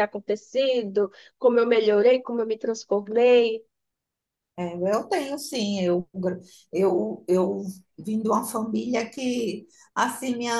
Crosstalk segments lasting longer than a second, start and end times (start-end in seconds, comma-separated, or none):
none